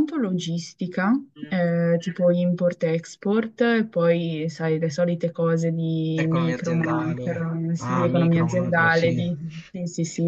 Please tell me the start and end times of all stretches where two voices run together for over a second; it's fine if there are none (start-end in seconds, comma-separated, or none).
6.2-9.2